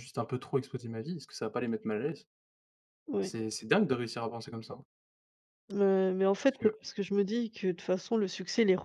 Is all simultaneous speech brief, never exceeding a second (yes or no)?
yes